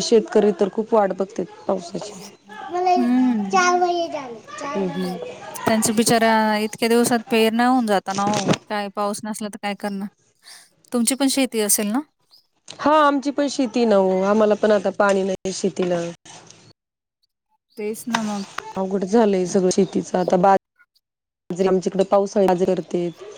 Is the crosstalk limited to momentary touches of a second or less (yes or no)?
yes